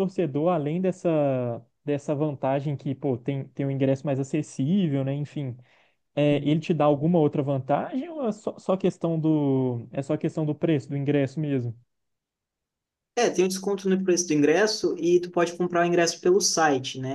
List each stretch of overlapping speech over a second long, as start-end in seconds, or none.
none